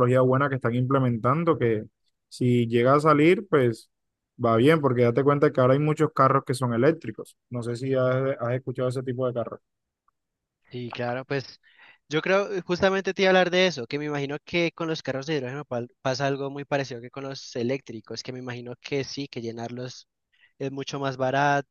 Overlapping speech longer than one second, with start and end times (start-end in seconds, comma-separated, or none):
none